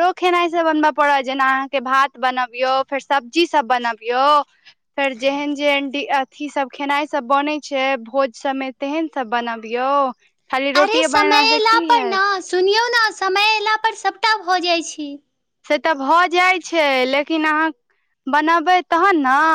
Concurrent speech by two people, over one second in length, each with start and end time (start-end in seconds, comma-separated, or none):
none